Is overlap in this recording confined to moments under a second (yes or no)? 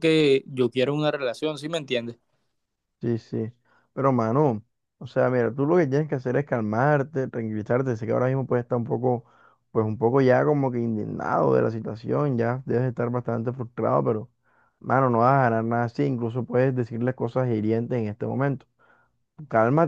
yes